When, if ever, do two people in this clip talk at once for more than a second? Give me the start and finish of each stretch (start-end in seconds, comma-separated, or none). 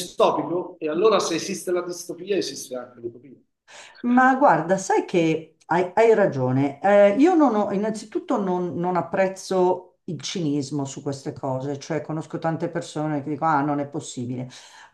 none